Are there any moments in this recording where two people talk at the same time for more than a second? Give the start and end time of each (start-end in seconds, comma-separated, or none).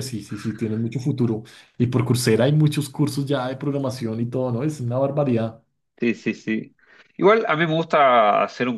none